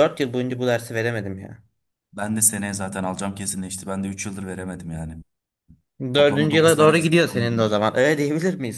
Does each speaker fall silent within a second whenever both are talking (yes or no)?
no